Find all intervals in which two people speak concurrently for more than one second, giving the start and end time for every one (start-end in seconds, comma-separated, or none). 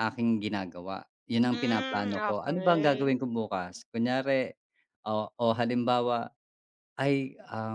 1.5-3.1